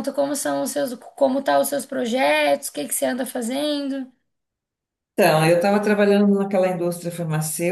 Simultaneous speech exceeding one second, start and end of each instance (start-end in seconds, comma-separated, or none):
none